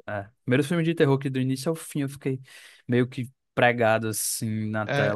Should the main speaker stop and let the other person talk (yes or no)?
yes